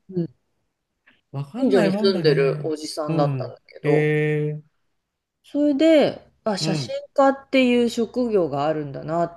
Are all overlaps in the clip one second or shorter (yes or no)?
no